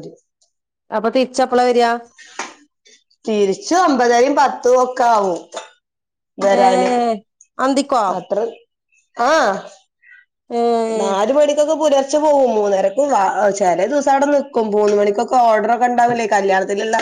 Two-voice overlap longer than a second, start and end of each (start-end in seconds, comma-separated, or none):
none